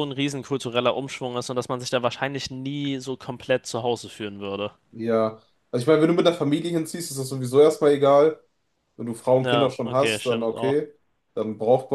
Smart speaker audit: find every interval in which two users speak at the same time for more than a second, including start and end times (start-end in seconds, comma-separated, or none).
9.4-10.8